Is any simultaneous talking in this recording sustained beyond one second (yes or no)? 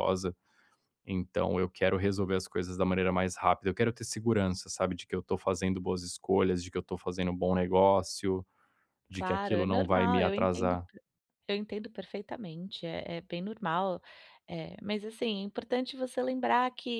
yes